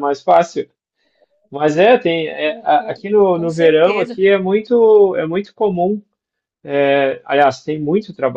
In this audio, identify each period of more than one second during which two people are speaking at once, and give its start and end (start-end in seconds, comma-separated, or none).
2.4-4.2